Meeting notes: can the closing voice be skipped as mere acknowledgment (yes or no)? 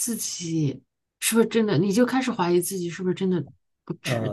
no